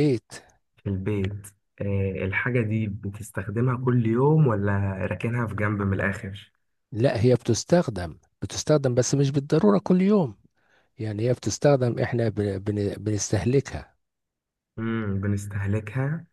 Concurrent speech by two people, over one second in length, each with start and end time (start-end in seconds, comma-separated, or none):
none